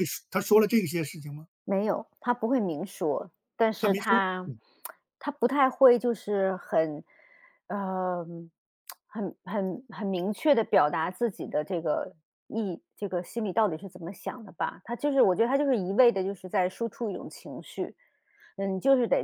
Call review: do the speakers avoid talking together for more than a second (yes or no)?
yes